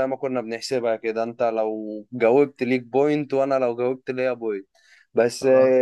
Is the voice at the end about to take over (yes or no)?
no